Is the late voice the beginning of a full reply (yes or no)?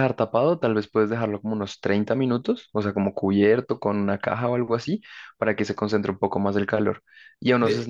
no